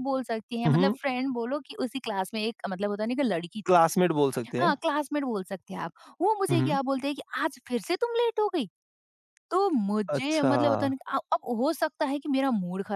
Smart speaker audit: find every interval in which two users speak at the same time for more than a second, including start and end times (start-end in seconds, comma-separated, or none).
none